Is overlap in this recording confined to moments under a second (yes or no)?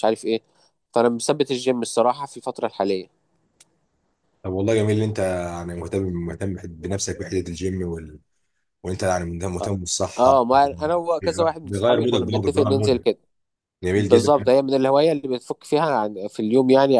no